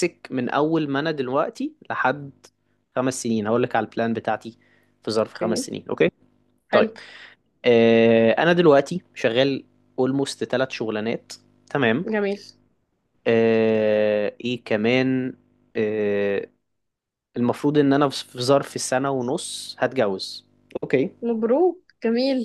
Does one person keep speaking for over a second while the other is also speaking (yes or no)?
no